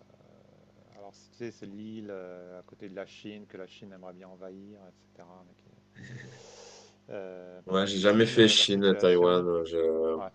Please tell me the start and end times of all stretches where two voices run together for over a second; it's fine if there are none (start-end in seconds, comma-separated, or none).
7.7-9.5